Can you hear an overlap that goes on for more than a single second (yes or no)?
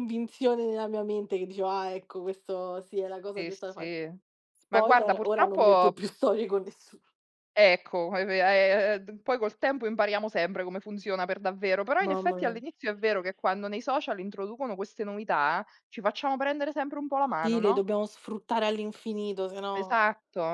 yes